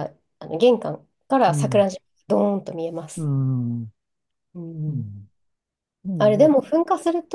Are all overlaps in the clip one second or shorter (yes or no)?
yes